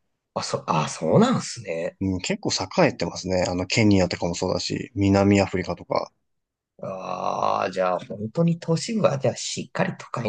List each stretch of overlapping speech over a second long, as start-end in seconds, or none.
none